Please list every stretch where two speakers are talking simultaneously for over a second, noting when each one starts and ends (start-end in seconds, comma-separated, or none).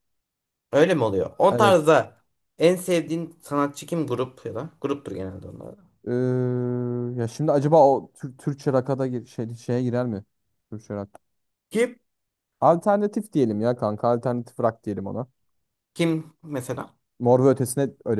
none